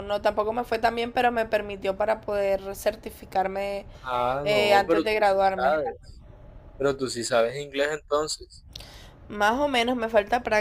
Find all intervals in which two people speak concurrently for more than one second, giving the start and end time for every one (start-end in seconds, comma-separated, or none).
4.4-5.9